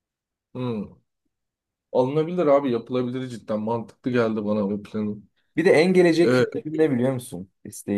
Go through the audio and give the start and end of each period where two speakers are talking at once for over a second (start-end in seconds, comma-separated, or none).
none